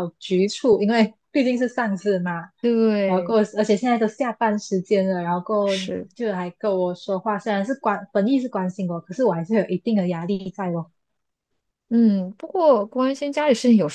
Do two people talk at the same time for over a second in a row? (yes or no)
no